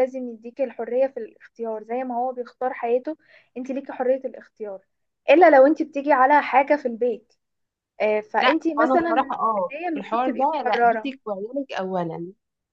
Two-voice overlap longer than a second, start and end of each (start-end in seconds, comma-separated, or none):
8.4-11.1